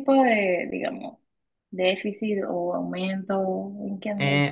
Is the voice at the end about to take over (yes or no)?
yes